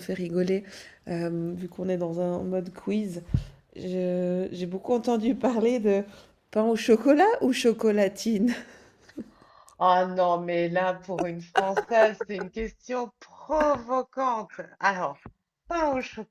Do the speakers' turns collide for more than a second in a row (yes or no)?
no